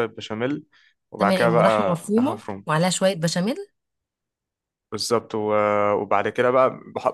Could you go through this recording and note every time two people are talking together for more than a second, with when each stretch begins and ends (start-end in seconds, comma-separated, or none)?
1.2-2.6